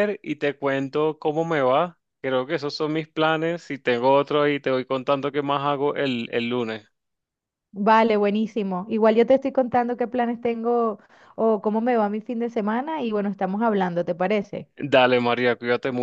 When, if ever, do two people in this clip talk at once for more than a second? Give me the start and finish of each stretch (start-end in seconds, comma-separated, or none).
none